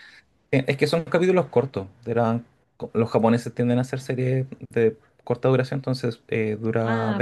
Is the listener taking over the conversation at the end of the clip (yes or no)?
yes